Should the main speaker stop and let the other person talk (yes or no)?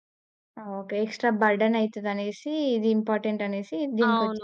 yes